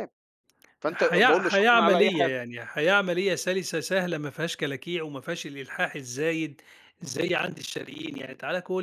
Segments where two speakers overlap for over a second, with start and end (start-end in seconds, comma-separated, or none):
0.9-2.3